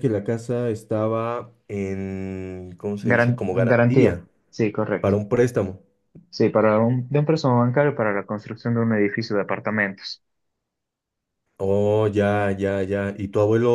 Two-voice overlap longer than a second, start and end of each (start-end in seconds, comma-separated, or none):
3.0-4.2